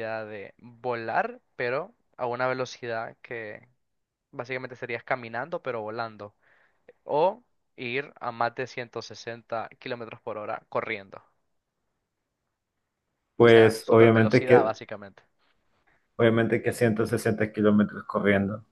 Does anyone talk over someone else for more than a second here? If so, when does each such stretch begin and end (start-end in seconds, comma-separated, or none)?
13.4-14.7